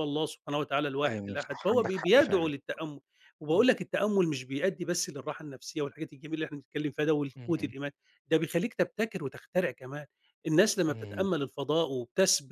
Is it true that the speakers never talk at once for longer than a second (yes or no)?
no